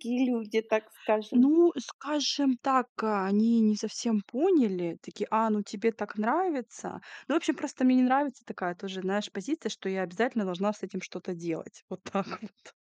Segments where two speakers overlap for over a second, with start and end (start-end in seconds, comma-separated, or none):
none